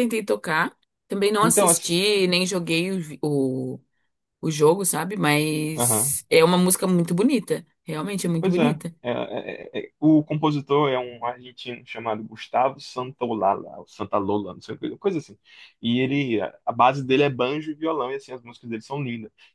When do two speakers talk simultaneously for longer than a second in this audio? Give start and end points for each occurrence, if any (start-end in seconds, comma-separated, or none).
none